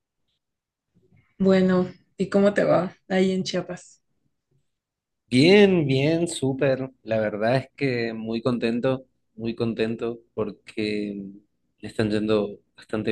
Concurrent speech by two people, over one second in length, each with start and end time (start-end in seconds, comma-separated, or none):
none